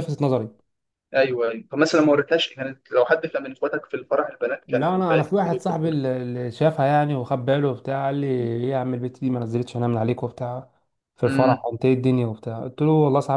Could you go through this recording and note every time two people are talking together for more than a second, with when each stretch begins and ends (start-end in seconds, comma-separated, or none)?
4.7-6.0